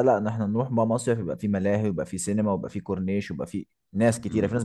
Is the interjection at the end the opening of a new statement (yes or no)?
yes